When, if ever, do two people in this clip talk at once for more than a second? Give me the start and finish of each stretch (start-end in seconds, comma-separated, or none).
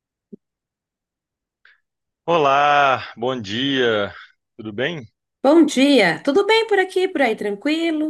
none